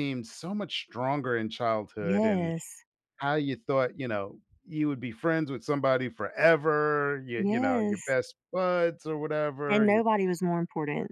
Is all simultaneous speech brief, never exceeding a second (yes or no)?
yes